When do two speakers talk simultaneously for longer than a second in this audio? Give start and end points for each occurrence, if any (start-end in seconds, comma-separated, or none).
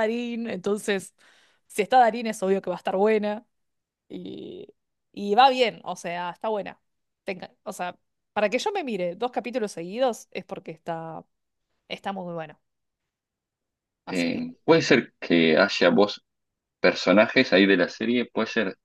none